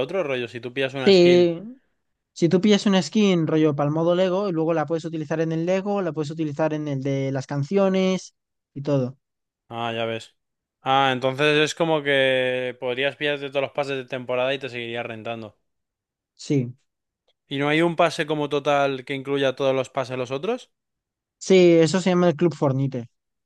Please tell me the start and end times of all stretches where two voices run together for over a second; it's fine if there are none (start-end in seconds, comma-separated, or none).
none